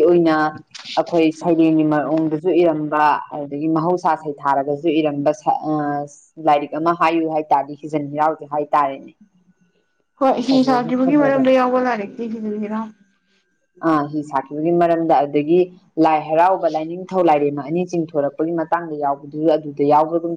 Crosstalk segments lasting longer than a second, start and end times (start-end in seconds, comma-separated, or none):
none